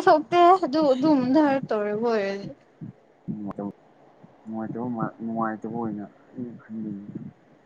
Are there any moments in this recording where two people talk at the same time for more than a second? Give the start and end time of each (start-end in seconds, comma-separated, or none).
none